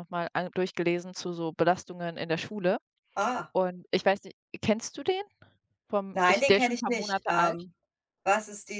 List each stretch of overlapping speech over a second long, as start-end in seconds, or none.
6.1-7.7